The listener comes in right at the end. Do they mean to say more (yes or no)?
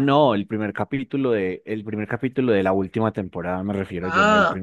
no